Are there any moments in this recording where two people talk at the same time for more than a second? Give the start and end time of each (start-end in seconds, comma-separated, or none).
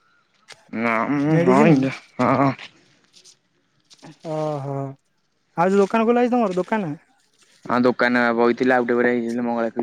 none